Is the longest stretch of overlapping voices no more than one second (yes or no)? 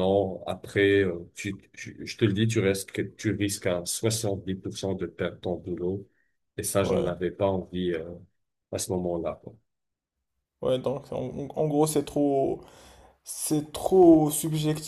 yes